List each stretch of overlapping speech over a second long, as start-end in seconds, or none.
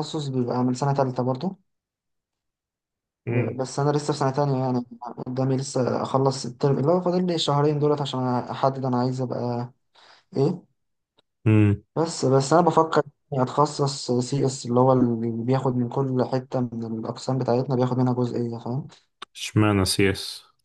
none